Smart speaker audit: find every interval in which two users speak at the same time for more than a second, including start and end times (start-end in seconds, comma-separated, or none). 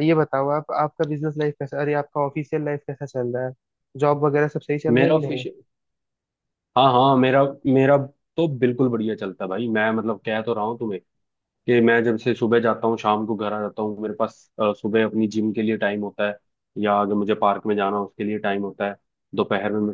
none